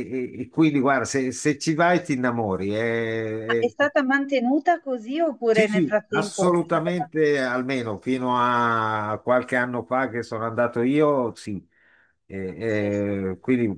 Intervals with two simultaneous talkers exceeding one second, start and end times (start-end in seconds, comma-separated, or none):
5.5-7.1